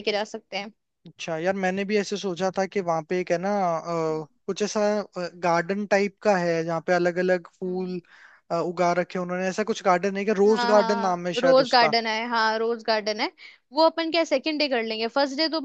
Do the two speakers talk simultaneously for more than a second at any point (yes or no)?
yes